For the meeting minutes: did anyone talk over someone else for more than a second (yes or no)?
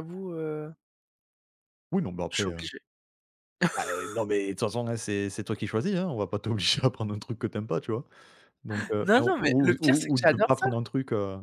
yes